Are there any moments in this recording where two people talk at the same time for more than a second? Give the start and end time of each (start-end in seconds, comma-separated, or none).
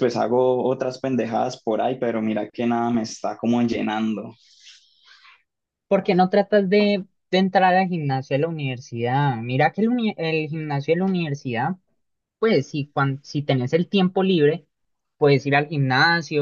none